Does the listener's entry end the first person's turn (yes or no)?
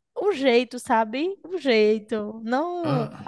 no